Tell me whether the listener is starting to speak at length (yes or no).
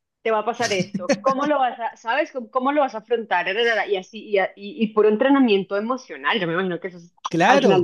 yes